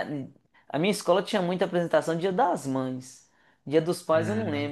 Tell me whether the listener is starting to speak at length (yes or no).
no